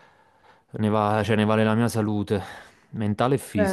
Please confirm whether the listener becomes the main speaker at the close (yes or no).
yes